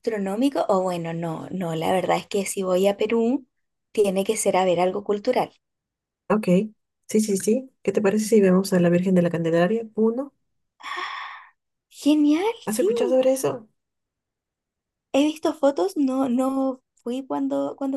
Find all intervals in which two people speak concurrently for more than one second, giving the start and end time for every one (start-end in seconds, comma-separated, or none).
none